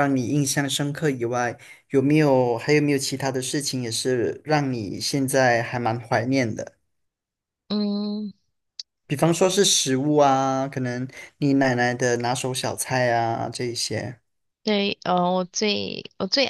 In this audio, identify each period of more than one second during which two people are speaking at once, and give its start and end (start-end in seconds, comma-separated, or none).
none